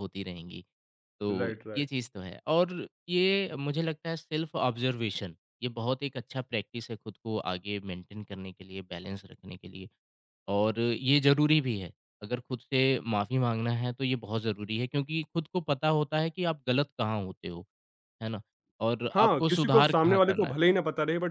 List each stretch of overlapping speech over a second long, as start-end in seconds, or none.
19.1-20.5